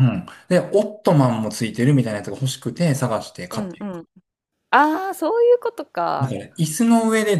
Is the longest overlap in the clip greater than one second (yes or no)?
no